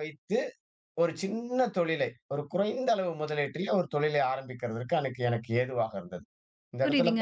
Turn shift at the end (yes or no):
yes